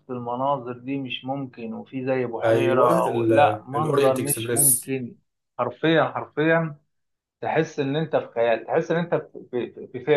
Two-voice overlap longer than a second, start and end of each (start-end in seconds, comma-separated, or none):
3.7-4.9